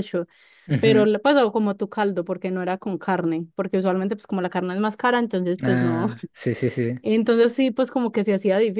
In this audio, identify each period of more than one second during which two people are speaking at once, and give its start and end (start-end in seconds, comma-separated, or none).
none